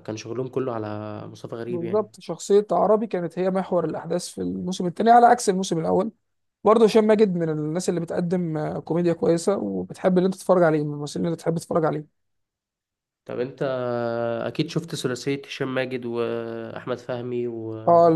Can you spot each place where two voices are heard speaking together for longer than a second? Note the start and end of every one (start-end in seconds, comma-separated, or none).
none